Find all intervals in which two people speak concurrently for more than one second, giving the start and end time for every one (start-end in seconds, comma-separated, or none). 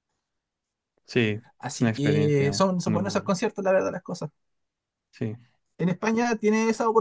1.6-3.4